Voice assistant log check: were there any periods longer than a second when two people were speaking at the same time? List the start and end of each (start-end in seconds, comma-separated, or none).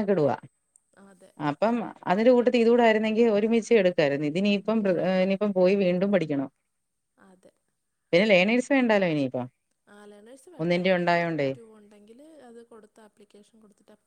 none